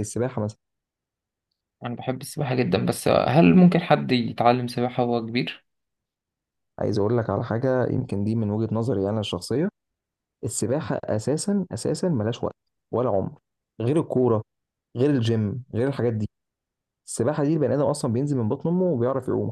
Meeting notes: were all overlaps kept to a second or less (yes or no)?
yes